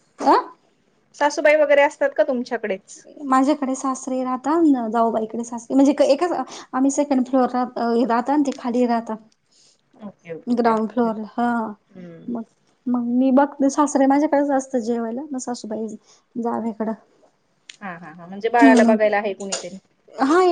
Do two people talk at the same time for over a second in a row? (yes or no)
no